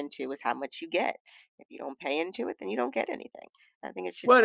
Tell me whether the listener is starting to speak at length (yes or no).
yes